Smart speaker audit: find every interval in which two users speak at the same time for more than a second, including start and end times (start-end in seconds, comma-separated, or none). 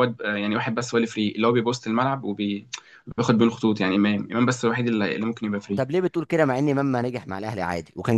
none